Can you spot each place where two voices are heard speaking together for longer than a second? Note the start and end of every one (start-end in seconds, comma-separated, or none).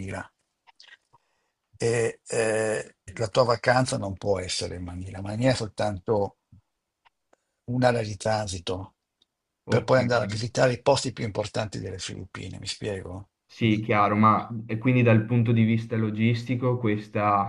none